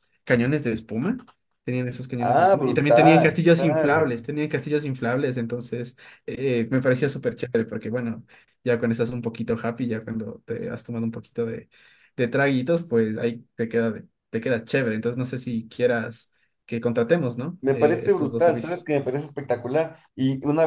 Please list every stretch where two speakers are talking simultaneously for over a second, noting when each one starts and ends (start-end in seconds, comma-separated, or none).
2.2-4.1, 17.6-18.9